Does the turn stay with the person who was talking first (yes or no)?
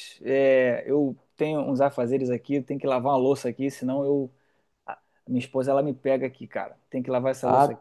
yes